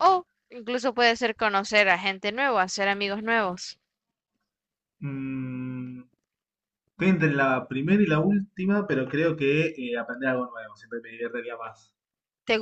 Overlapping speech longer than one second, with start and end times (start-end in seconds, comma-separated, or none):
none